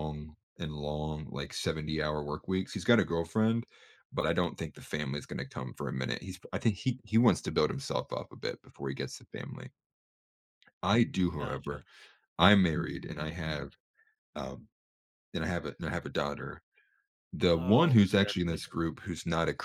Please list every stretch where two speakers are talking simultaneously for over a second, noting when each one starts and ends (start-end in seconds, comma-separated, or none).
17.5-18.7